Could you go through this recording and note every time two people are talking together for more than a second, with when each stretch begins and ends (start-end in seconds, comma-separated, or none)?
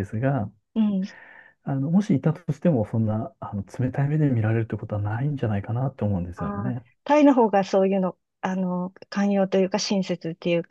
none